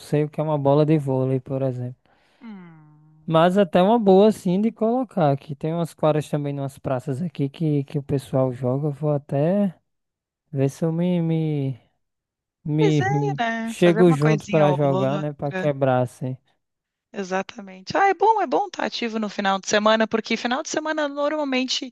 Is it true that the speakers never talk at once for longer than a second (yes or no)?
no